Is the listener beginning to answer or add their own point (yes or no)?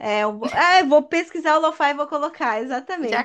yes